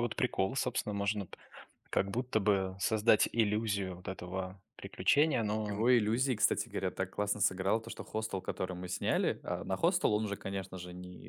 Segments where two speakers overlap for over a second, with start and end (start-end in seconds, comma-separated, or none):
none